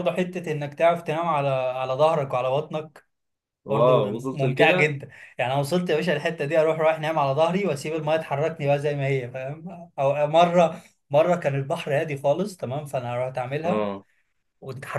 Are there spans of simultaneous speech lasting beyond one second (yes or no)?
yes